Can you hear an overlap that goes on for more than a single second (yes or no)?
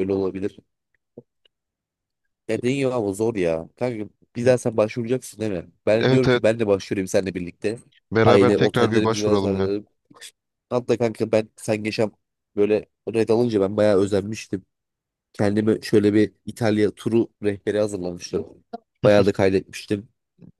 yes